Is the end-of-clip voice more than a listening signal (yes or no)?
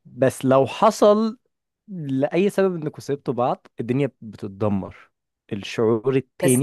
yes